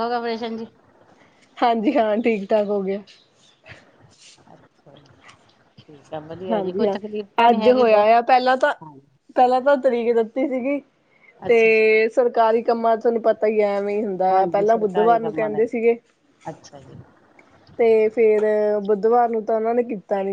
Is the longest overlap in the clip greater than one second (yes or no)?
yes